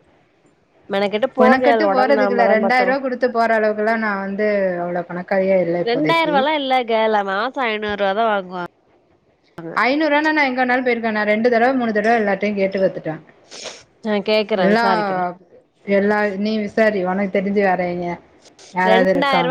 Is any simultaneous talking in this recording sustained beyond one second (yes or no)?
yes